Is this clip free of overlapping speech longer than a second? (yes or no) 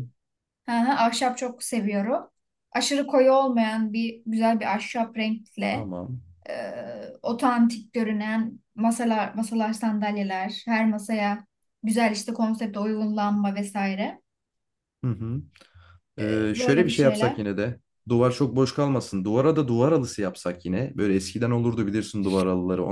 no